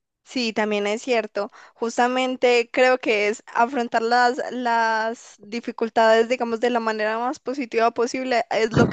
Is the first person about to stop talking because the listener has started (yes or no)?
no